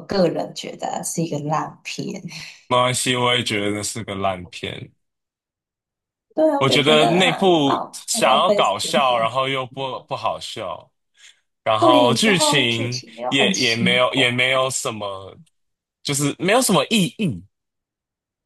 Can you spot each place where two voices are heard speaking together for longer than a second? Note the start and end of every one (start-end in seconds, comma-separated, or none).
6.6-8.9, 11.8-14.2